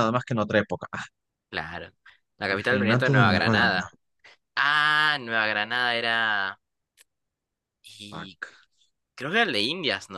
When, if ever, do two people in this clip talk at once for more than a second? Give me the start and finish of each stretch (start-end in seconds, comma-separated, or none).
2.5-4.0